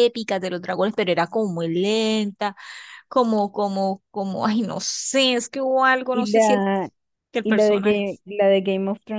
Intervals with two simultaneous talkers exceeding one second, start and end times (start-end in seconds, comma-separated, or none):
none